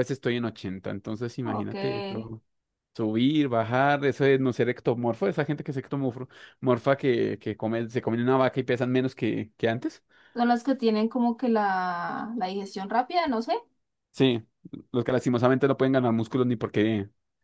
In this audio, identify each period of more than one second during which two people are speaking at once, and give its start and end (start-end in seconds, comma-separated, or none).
none